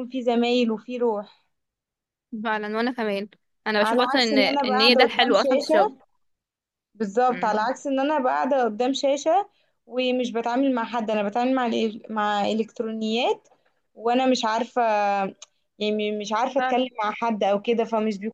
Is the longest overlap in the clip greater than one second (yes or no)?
yes